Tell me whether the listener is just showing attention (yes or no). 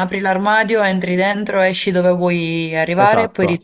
no